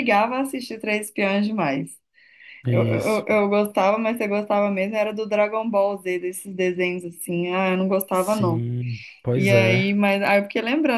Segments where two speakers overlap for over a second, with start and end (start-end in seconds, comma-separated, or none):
none